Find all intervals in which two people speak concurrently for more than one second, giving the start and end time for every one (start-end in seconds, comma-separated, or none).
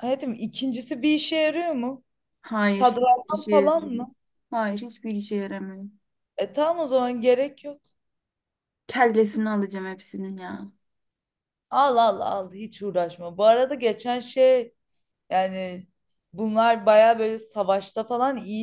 2.7-4.0